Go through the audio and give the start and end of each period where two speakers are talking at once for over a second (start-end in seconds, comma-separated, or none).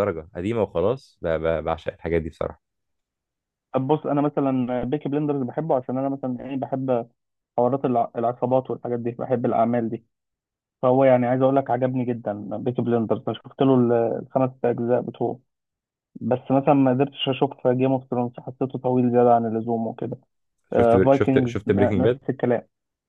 20.7-22.2